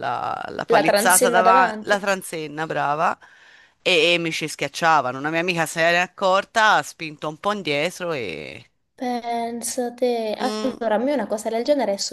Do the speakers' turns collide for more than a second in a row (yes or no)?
yes